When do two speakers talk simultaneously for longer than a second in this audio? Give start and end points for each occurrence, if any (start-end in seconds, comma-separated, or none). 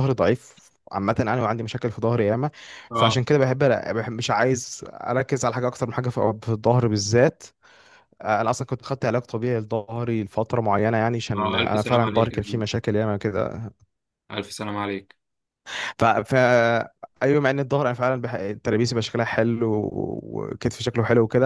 11.3-12.6